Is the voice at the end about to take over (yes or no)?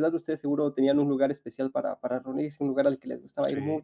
no